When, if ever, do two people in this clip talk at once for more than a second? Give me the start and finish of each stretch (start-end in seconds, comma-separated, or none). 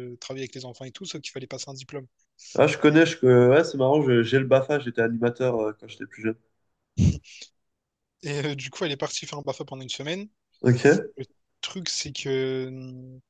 none